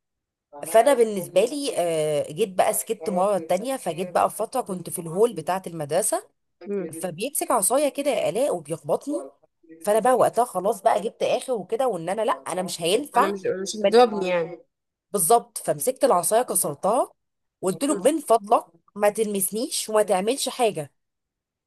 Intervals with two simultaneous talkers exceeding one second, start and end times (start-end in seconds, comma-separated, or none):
none